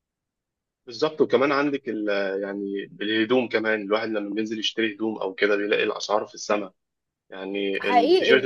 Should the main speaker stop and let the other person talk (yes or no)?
yes